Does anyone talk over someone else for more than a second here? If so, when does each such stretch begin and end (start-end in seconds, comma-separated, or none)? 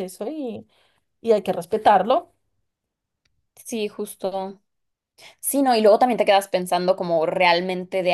none